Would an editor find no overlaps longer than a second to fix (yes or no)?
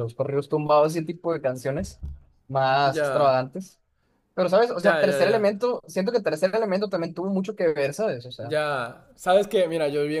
yes